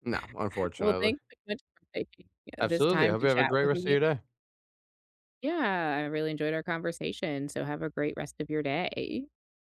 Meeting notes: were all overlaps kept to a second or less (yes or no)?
no